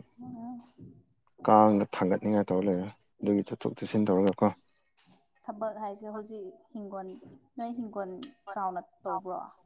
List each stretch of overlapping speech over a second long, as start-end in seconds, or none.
none